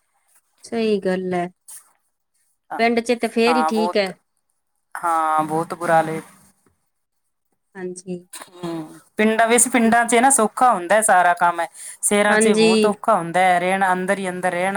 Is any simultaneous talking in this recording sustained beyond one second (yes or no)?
yes